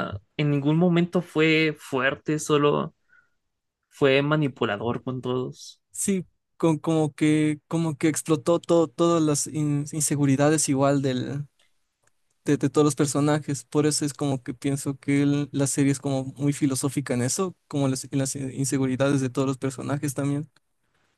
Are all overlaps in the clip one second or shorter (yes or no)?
yes